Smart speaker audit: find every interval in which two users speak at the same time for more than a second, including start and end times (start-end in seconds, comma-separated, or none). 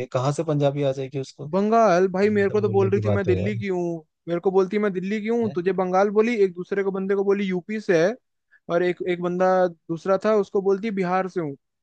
2.0-3.6